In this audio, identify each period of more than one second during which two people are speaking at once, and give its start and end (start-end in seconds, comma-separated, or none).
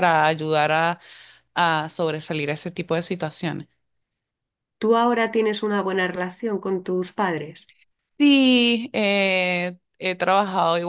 none